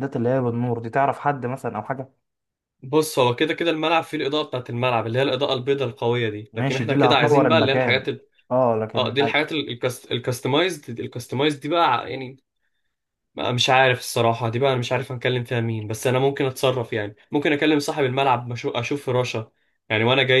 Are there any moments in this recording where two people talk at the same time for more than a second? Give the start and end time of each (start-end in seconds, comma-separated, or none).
6.5-8.0